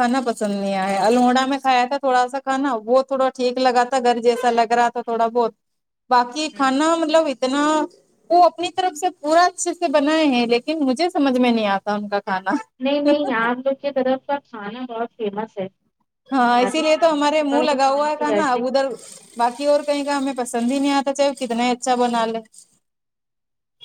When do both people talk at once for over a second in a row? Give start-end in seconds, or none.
16.6-18.6